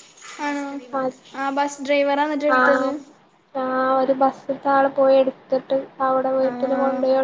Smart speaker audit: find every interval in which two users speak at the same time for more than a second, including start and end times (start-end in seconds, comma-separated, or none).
none